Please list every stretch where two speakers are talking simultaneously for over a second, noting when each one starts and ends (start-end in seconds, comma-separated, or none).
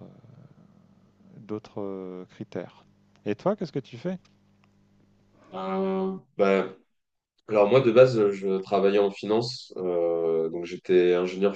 none